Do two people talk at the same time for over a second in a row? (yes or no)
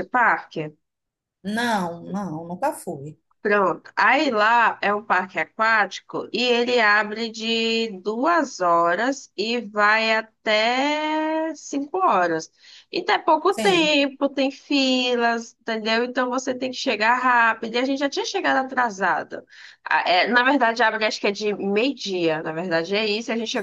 no